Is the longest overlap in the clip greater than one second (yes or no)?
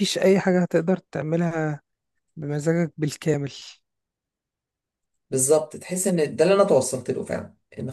no